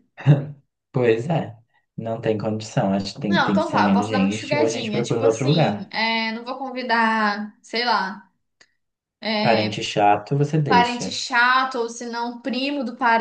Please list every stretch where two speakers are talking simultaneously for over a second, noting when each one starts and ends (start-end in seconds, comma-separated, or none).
3.3-5.9